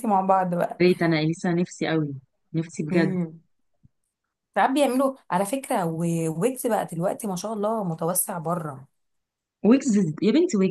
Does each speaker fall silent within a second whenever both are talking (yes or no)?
yes